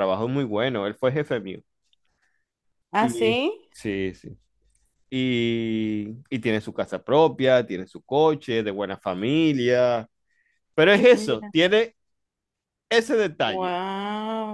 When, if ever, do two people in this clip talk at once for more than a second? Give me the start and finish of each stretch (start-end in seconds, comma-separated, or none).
none